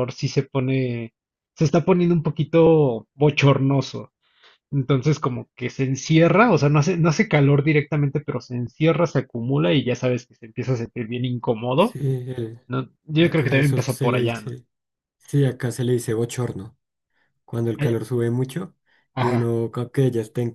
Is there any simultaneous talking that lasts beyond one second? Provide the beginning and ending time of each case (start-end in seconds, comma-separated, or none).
13.2-14.5